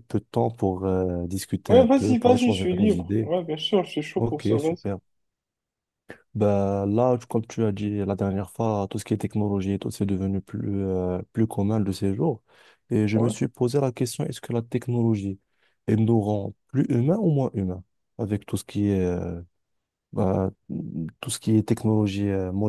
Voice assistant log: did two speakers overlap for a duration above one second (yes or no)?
yes